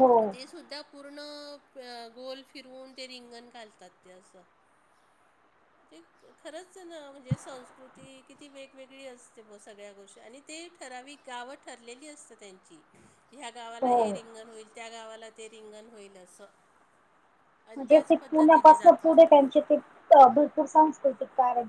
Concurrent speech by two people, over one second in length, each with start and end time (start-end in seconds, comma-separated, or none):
17.8-19.3